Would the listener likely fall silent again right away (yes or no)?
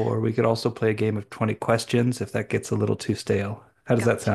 no